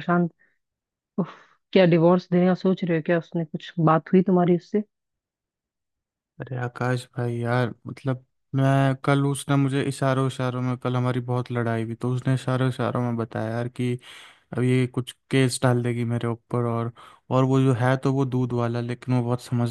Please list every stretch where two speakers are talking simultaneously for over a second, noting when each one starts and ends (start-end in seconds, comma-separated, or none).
none